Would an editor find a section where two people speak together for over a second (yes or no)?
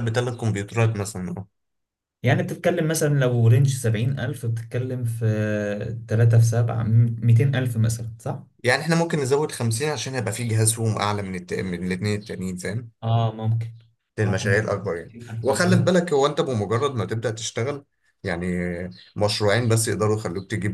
yes